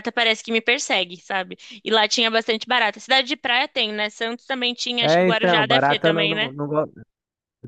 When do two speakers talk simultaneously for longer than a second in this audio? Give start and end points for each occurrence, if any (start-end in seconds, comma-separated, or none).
5.0-6.5